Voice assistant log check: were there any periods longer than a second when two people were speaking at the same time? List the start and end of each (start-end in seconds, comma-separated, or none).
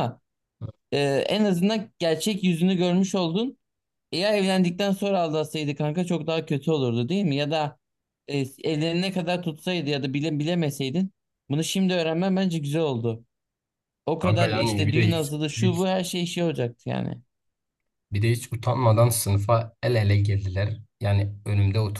14.2-15.9